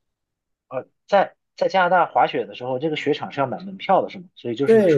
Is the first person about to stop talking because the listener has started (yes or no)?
yes